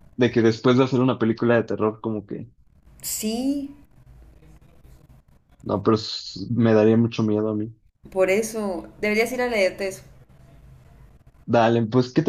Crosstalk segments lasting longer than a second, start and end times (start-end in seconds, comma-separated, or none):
none